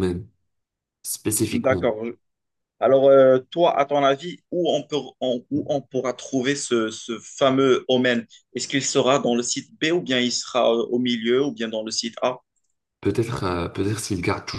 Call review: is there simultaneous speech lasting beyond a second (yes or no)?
no